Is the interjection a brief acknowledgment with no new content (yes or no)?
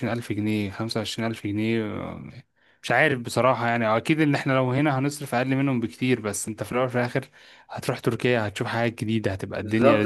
no